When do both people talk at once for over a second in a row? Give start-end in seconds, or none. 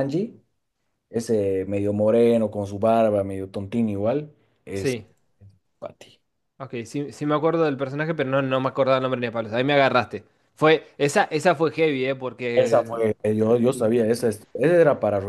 12.5-13.9